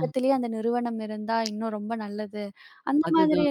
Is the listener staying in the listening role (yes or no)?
yes